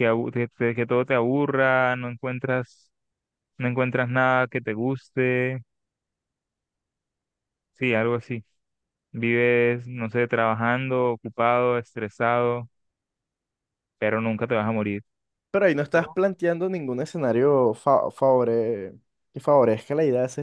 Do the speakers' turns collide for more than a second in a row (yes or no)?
no